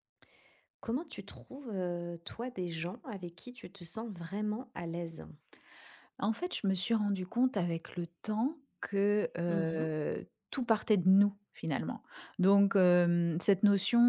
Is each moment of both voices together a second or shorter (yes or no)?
yes